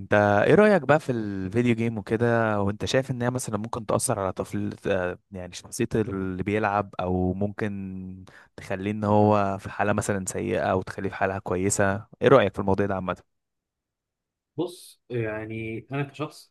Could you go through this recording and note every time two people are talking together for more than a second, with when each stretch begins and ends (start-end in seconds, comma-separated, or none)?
none